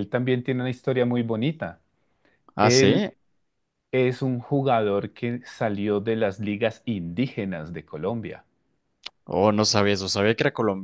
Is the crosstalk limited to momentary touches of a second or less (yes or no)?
yes